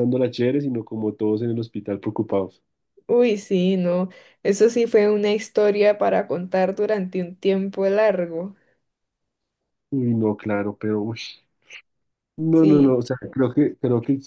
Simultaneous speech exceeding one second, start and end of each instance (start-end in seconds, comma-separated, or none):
none